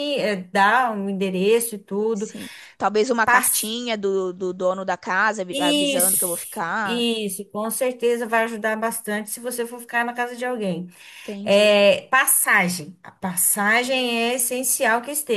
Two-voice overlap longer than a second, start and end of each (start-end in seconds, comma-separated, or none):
5.5-7.1